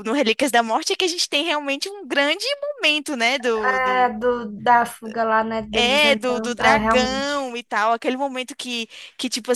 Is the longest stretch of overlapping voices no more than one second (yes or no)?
no